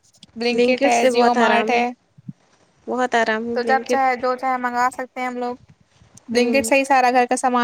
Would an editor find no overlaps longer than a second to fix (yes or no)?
no